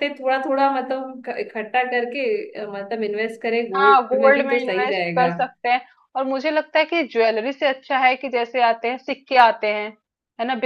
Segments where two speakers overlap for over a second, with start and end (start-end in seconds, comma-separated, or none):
3.8-5.3